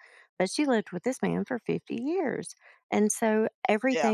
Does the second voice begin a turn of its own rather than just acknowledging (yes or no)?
no